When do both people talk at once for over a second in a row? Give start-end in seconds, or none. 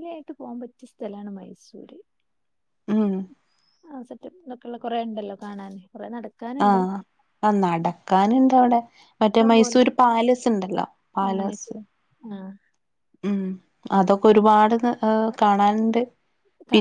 none